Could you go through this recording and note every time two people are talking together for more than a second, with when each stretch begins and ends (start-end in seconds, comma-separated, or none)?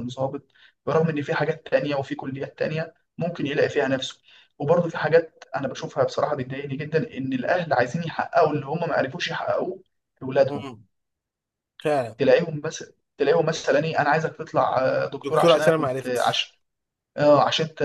15.2-16.5